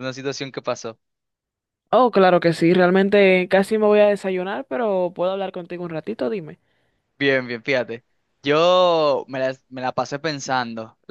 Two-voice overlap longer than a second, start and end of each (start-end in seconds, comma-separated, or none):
none